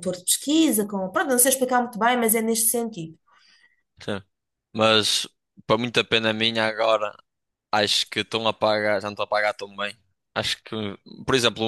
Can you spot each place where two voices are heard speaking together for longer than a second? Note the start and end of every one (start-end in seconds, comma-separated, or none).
none